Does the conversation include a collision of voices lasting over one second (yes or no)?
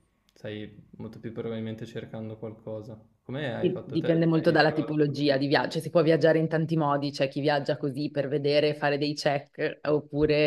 yes